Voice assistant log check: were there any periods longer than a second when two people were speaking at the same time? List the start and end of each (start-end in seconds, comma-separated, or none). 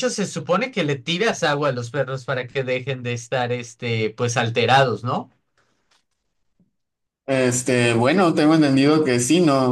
none